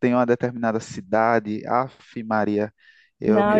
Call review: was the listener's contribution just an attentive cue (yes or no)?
no